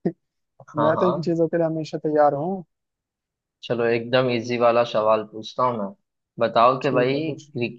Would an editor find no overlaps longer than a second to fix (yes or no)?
yes